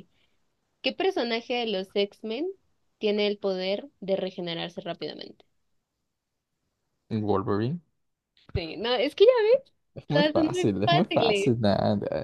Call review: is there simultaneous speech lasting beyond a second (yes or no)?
yes